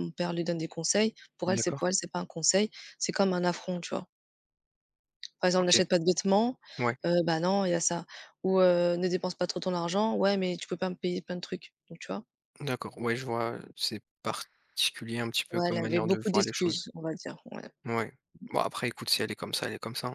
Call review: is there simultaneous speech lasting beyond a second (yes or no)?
yes